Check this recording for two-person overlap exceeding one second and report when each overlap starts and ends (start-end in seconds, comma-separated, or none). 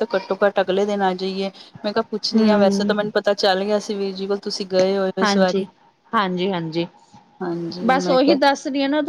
none